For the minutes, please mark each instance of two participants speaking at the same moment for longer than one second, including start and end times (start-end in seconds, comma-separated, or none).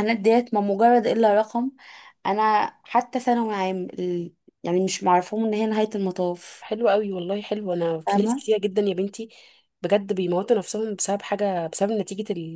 none